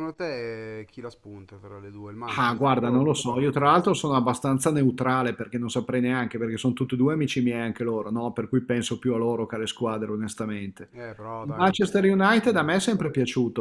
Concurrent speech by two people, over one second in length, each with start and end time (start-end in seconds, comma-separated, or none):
2.4-3.7, 11.4-12.7